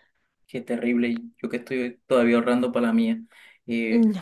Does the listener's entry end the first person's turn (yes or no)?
no